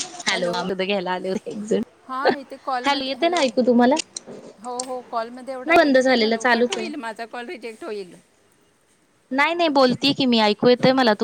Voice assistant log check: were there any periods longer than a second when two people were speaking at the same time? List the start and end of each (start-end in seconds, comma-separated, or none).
5.6-6.9